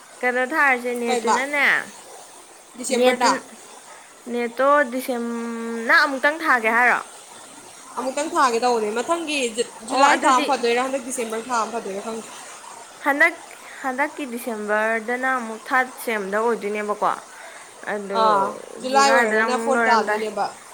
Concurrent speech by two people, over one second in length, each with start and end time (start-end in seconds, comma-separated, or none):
18.9-20.2